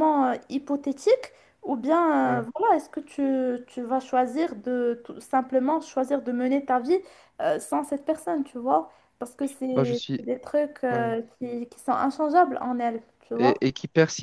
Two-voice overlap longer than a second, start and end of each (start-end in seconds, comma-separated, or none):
none